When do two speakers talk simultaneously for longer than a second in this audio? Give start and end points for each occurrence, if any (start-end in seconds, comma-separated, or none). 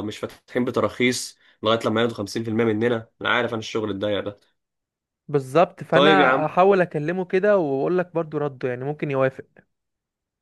none